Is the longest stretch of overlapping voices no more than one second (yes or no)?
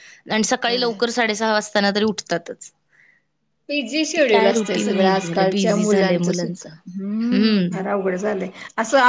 no